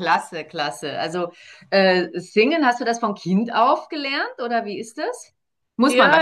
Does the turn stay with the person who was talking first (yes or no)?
no